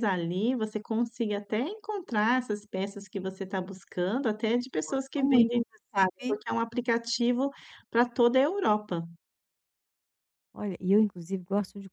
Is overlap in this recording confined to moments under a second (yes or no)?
no